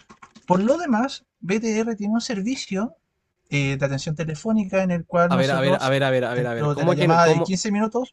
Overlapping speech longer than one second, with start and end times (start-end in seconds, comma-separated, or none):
5.3-7.5